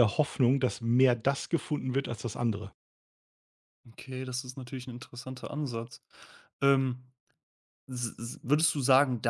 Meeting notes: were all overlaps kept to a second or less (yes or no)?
yes